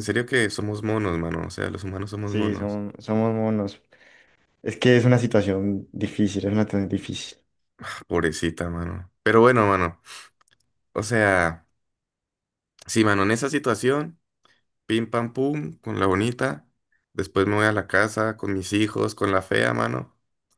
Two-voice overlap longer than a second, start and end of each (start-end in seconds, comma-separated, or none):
none